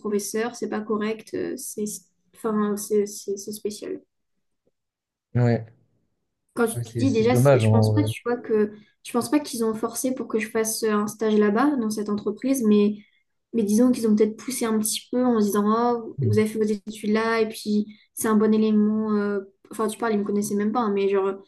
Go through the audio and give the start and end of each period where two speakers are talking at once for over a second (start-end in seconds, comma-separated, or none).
6.7-8.1